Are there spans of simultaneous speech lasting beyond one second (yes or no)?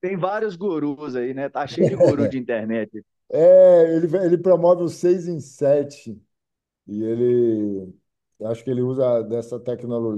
no